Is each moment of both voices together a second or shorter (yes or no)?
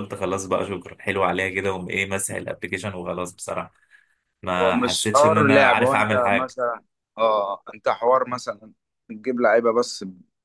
no